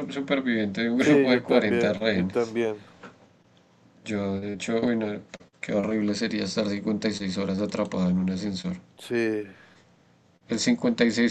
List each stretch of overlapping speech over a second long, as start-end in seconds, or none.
1.0-2.5